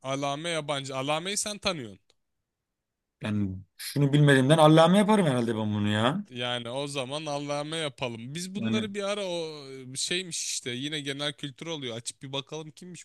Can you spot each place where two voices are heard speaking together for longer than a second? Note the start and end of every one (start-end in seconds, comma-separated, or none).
none